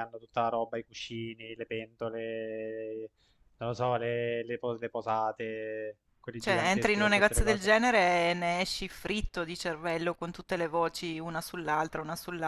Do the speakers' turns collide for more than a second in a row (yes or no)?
yes